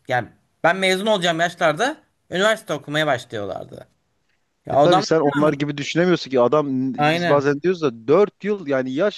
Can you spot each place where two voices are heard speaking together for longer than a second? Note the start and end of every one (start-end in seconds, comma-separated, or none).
none